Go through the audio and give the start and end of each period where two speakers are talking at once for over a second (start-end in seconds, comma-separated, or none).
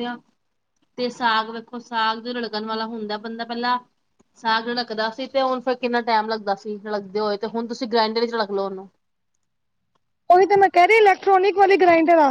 none